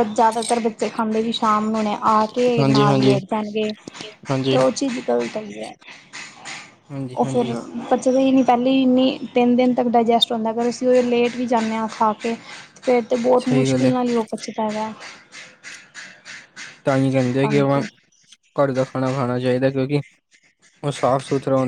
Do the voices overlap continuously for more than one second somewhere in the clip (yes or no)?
no